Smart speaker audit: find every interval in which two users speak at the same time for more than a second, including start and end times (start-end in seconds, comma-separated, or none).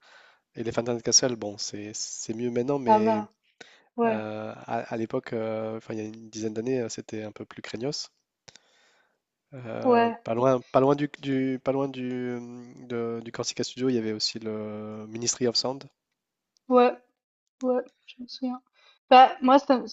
none